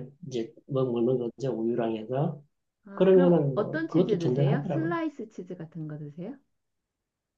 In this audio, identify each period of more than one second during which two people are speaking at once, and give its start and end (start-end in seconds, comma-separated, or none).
2.9-5.0